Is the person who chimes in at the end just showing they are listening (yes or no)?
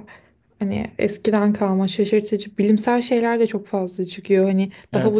yes